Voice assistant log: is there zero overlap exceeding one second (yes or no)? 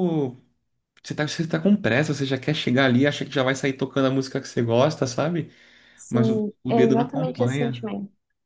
no